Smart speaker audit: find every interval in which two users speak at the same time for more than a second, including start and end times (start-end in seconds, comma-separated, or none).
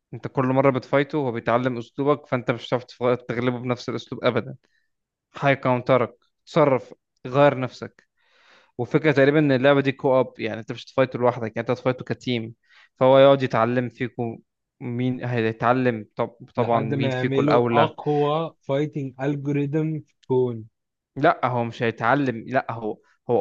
16.6-18.0